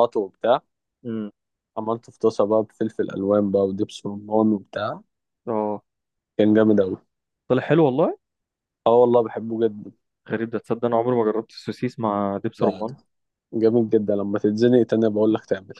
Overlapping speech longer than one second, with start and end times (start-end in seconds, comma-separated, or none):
none